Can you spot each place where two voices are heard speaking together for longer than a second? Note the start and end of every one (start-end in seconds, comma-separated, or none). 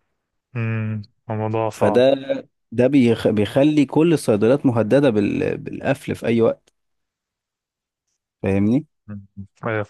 none